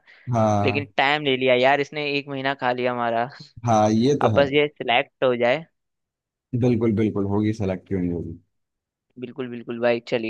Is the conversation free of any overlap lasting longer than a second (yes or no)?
yes